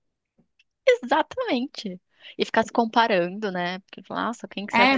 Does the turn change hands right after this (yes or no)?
yes